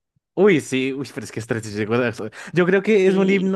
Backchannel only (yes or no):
yes